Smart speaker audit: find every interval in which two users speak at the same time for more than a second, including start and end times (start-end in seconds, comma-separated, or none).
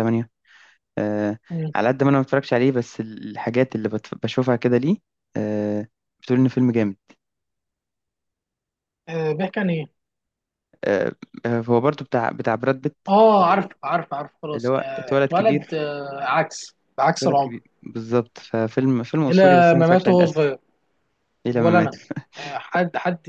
14.5-15.9, 19.3-20.5